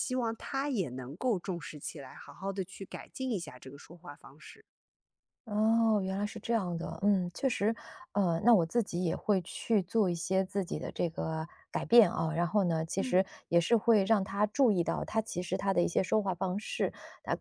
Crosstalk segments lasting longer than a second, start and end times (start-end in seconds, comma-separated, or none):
none